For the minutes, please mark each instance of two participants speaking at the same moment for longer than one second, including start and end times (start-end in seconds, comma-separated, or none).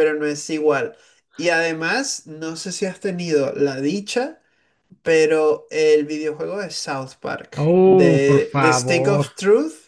7.6-9.3